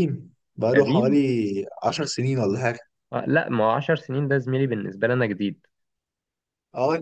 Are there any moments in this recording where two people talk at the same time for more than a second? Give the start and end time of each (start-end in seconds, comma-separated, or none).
none